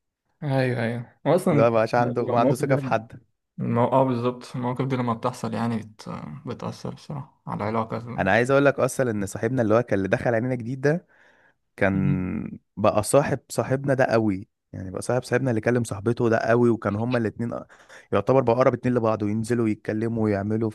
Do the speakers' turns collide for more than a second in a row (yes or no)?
yes